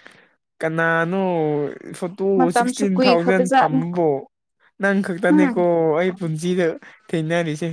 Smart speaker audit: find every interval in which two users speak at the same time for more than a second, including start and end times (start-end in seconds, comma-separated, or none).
2.4-3.9